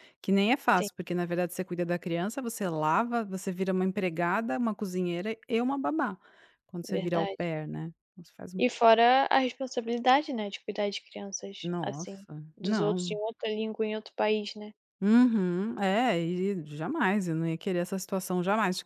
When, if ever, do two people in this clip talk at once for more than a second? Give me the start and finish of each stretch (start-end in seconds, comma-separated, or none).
11.6-13.2